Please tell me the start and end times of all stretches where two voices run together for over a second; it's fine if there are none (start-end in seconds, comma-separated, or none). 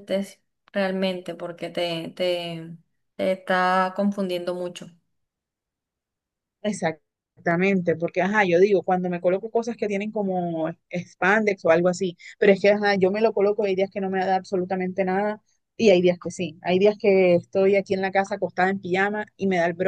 none